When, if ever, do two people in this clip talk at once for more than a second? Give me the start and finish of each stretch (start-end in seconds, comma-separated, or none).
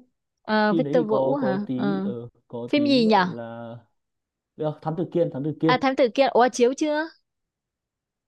0.7-2.1